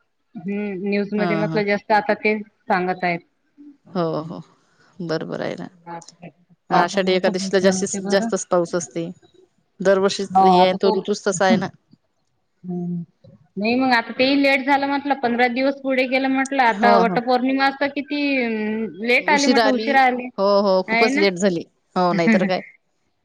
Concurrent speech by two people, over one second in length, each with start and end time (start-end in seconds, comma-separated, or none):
6.8-8.3